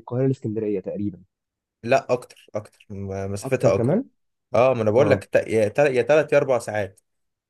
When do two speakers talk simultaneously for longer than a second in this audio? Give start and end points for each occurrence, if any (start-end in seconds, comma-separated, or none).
none